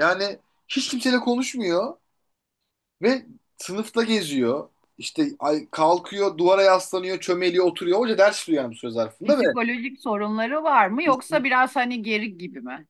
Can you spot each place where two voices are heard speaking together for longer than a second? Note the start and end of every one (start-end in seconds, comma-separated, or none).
none